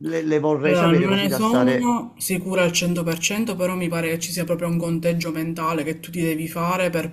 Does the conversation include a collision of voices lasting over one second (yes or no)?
yes